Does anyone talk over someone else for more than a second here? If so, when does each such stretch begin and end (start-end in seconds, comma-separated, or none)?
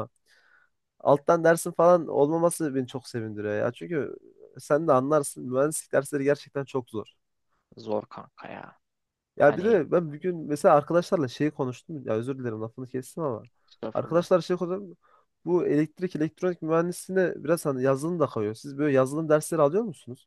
none